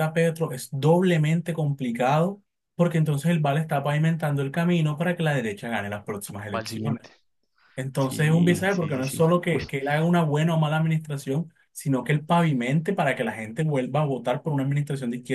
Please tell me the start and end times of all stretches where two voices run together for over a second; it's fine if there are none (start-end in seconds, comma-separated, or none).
8.0-9.6